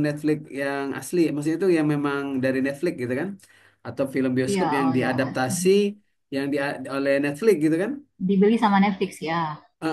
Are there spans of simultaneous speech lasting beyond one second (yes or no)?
no